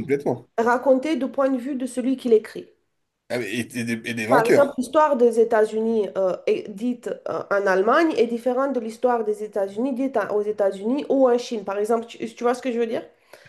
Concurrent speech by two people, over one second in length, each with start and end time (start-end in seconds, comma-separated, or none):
none